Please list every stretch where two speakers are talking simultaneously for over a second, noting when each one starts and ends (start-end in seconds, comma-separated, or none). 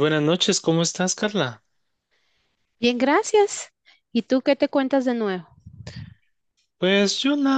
none